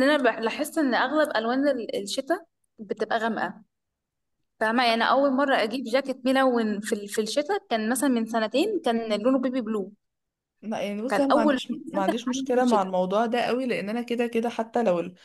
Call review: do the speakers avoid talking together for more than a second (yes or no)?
no